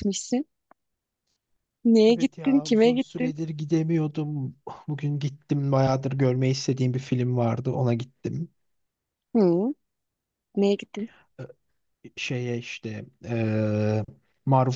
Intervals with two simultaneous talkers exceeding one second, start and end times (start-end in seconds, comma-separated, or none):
2.1-3.3